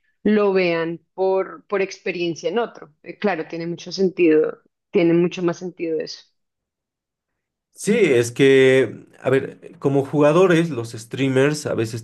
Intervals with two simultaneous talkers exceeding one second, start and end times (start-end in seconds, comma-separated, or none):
none